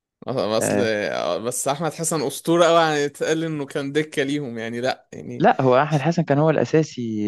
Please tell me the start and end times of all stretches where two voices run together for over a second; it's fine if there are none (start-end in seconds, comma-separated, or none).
none